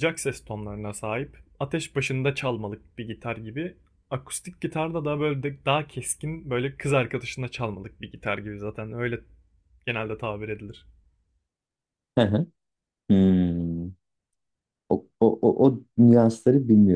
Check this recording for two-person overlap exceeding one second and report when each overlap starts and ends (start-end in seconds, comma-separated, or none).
none